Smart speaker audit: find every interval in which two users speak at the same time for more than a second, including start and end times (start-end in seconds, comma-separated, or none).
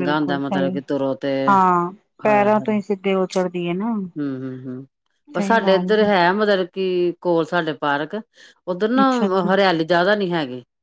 none